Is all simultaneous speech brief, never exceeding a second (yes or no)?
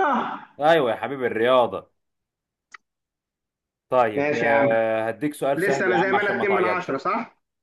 no